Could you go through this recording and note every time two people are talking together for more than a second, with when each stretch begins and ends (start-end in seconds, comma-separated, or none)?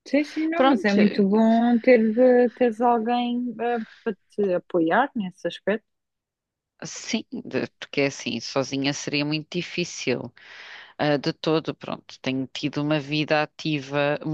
none